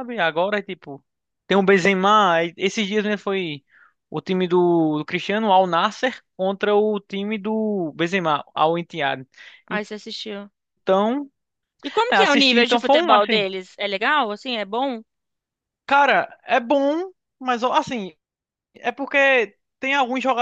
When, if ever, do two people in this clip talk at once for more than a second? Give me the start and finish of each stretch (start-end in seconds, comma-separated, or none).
12.1-13.4